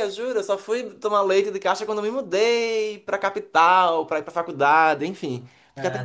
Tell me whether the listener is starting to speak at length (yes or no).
no